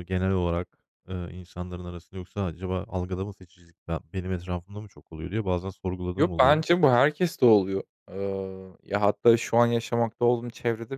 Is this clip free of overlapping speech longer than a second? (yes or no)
yes